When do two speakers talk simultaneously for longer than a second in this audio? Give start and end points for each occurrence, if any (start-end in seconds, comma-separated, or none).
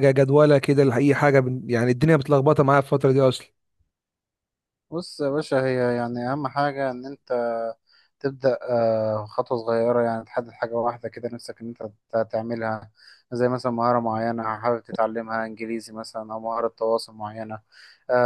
none